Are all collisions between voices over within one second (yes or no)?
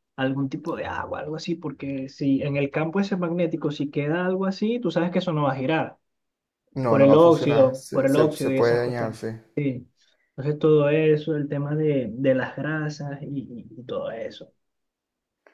no